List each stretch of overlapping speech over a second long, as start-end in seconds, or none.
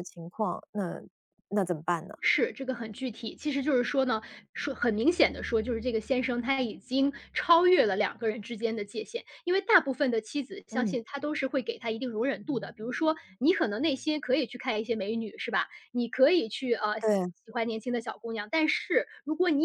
none